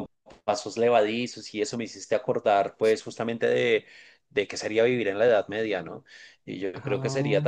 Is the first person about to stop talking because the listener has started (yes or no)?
no